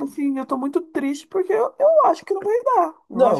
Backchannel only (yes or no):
no